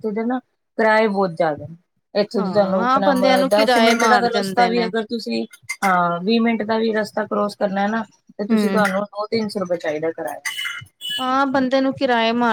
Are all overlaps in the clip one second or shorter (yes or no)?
no